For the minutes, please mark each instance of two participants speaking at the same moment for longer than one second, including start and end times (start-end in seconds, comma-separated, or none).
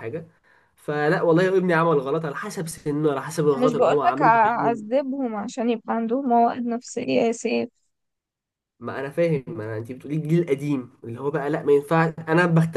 3.5-4.8